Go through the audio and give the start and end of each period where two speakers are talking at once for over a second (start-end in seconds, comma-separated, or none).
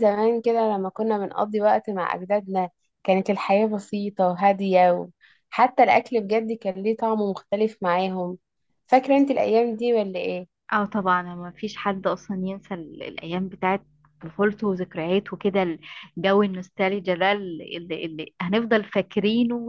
none